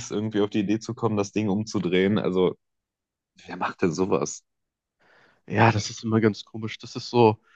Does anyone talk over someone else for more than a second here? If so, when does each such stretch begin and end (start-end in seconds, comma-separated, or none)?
none